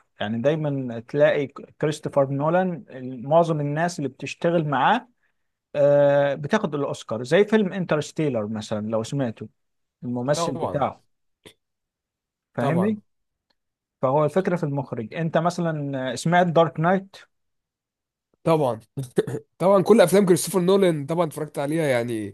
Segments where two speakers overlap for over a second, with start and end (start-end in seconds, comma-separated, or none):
none